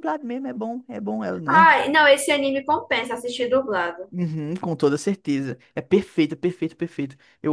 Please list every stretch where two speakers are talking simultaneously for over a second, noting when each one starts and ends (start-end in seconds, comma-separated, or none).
none